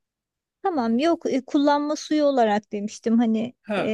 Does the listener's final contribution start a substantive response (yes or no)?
yes